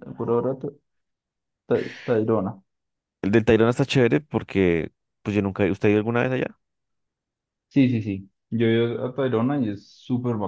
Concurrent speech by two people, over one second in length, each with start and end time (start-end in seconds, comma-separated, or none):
none